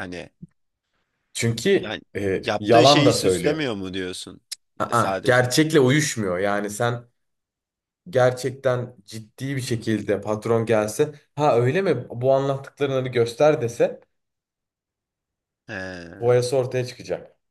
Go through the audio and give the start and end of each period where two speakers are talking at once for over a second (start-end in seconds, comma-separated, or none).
1.8-3.6